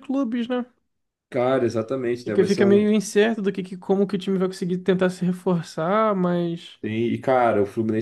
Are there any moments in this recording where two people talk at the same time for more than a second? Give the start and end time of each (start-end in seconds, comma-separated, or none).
none